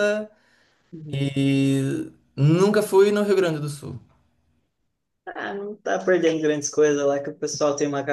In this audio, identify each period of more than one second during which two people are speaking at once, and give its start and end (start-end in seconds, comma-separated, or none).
none